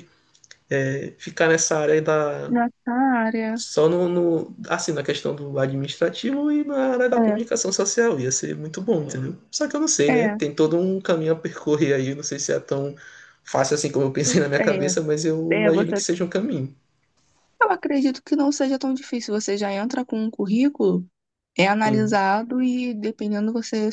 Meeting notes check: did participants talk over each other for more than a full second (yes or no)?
no